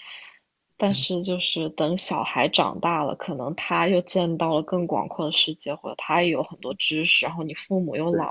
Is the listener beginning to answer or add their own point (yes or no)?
no